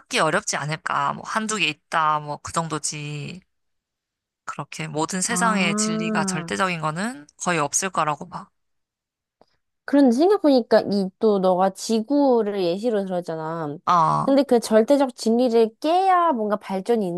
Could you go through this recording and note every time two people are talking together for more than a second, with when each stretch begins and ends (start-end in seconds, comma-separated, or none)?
5.2-6.5